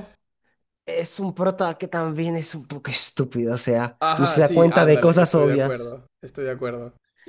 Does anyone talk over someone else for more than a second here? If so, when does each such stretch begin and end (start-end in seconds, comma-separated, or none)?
4.0-6.0